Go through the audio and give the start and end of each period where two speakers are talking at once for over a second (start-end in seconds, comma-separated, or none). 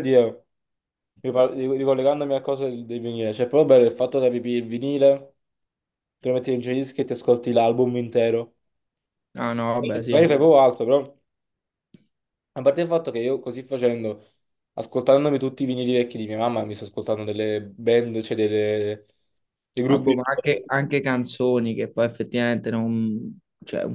none